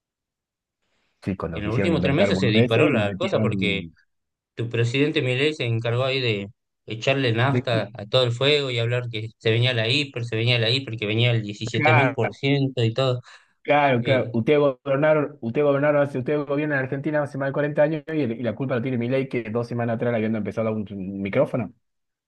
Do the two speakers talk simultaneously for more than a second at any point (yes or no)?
yes